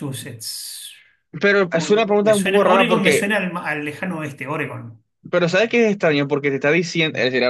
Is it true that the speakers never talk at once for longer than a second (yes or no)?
no